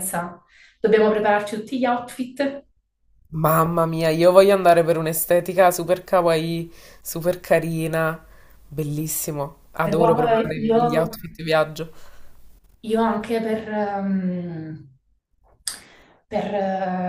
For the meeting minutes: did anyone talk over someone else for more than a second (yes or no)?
yes